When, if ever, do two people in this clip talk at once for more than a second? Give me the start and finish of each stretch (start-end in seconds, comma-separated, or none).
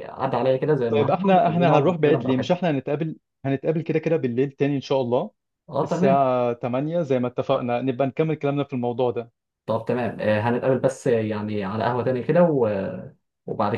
0.9-2.6